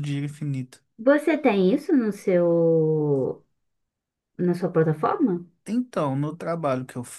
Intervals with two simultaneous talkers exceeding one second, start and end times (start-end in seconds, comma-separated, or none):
none